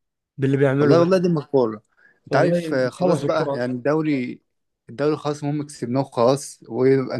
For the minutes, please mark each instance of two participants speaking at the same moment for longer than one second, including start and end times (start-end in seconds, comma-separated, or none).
2.3-3.7